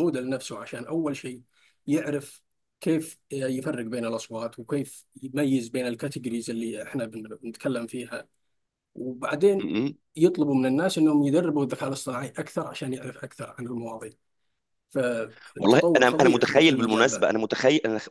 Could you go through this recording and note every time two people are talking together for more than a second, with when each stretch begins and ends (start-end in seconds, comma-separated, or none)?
15.6-17.3